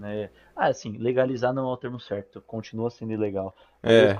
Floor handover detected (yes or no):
no